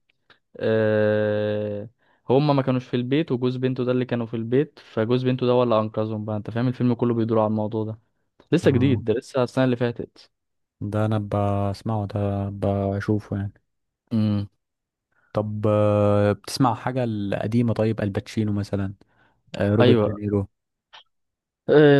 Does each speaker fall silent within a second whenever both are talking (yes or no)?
yes